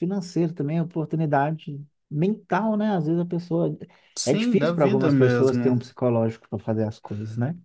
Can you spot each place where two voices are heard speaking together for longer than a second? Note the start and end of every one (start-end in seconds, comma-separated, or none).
4.2-5.8